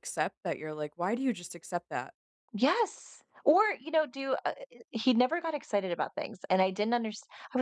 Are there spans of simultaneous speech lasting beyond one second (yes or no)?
no